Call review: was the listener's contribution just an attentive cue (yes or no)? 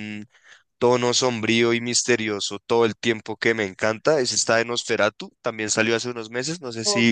no